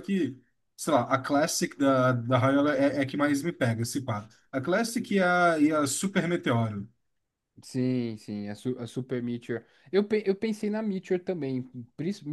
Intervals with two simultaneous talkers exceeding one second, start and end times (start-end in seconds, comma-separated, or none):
none